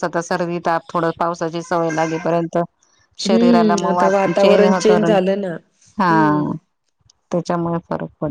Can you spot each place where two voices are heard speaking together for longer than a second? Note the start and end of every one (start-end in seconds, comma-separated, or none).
3.3-4.9